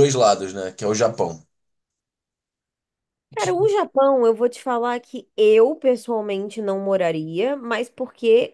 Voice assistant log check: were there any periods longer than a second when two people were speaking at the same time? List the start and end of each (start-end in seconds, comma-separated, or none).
none